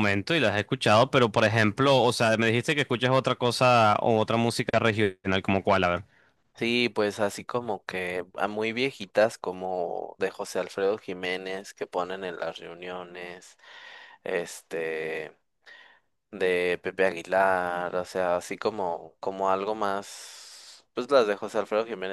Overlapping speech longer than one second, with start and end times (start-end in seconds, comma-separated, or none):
none